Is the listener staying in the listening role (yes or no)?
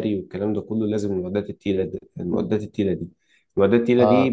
yes